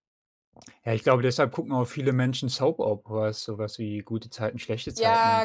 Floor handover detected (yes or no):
yes